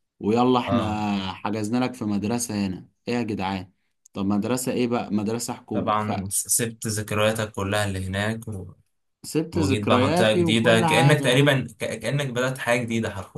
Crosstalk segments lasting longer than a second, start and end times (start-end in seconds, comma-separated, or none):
9.5-11.4